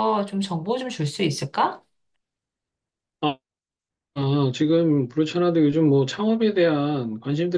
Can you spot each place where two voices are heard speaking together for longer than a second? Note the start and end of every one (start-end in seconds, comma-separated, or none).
none